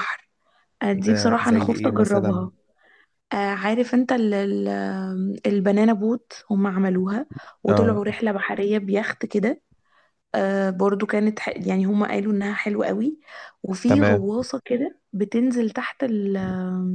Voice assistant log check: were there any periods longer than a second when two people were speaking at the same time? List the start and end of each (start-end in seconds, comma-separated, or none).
0.9-2.5